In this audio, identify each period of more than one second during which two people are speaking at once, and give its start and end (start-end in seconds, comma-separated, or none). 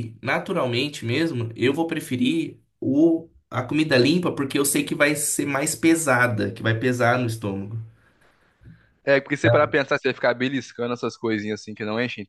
none